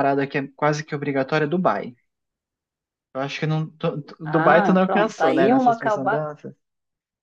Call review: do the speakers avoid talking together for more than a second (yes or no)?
no